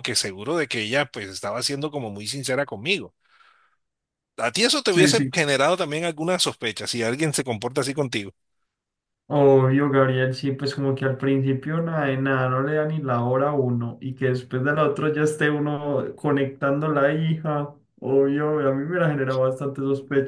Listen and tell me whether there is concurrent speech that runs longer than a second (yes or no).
no